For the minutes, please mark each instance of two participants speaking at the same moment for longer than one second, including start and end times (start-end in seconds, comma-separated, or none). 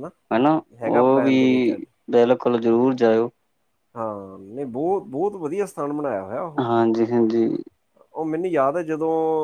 none